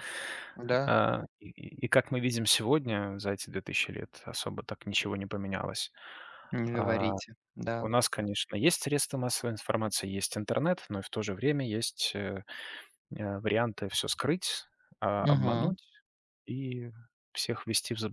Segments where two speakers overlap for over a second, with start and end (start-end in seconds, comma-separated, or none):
none